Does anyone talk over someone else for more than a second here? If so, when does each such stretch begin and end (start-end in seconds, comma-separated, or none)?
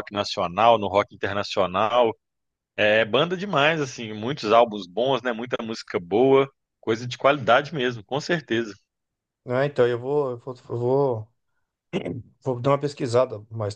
none